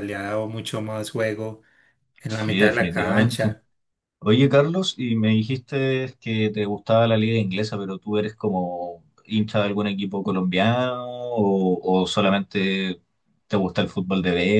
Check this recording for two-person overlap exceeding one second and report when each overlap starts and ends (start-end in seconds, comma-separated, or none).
2.3-3.5